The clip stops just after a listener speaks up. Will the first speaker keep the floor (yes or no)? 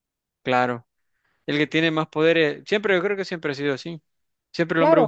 yes